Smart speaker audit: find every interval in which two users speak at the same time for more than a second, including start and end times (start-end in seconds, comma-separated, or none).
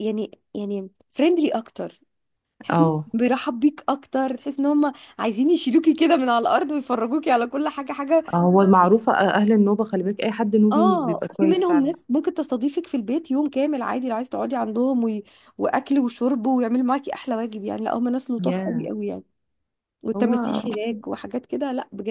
10.7-11.9